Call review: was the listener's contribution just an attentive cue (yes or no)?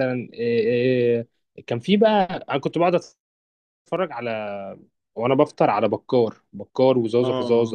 no